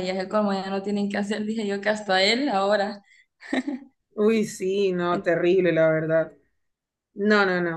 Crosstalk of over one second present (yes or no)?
no